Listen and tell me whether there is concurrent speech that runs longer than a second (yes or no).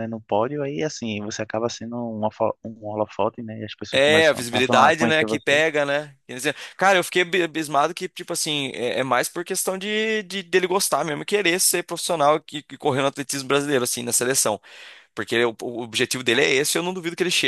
yes